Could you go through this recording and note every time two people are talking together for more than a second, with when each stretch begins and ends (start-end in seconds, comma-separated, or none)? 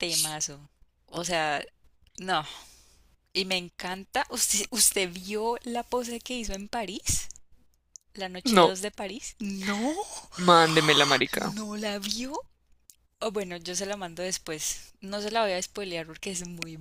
none